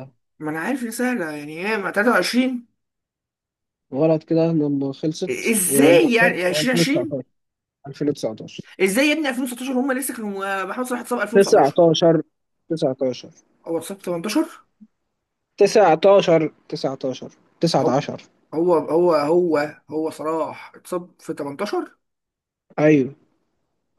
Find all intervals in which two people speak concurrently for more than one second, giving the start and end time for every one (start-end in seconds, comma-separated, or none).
5.3-7.2